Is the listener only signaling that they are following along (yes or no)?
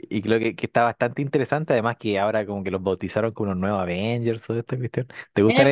no